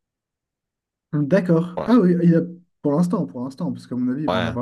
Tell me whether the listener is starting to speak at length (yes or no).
no